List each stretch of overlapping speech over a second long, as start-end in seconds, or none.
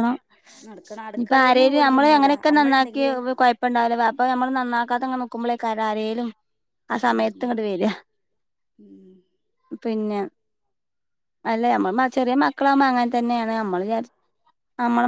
1.2-3.0